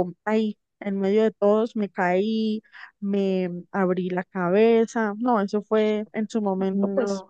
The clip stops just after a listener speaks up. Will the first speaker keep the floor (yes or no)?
yes